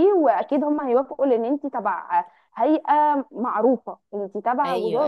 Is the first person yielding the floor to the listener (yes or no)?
yes